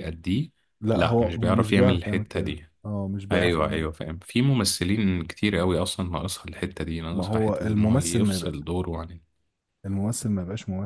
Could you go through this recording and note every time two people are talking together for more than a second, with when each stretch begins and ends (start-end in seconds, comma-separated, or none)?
0.9-2.6, 7.1-8.5